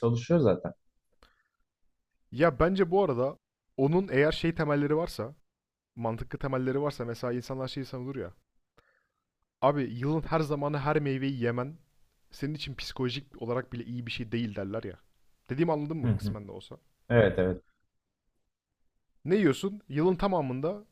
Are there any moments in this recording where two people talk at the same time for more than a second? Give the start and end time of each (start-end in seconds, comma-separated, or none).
none